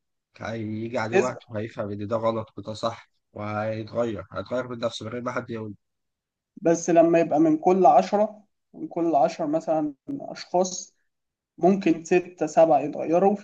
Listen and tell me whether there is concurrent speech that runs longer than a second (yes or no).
no